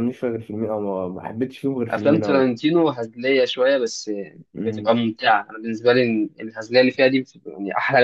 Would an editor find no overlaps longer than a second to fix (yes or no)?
yes